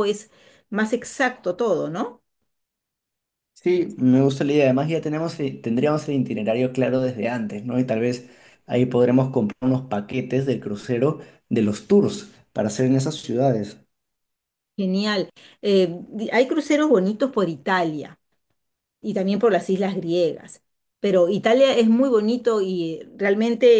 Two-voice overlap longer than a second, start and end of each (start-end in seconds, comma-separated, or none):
none